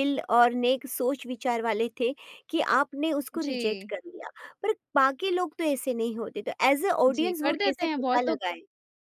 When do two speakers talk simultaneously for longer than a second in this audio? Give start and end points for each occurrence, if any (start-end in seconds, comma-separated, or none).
7.1-8.4